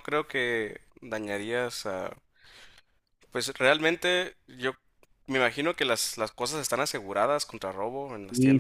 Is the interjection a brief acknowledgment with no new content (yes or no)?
no